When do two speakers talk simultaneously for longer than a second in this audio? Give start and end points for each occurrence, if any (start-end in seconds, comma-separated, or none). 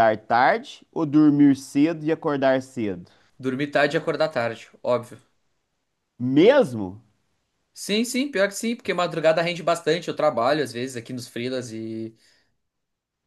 none